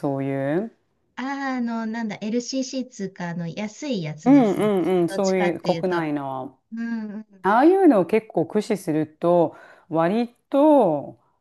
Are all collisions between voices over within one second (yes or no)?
no